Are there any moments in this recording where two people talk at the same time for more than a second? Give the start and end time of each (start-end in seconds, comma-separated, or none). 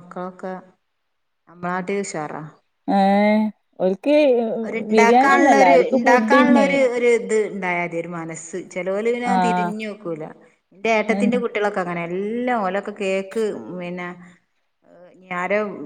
4.9-6.7